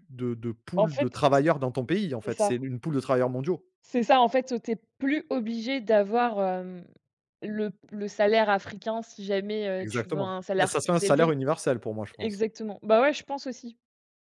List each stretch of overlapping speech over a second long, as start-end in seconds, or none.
9.8-11.3